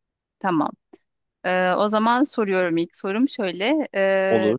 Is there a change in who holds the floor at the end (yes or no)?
no